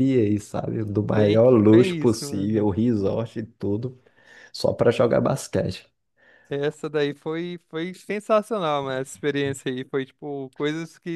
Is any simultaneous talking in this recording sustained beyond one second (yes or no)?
yes